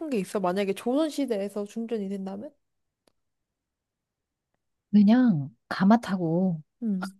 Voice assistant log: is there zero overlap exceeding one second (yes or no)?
yes